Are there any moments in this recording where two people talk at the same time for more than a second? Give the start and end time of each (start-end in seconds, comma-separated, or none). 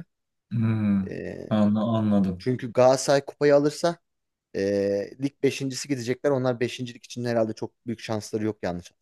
none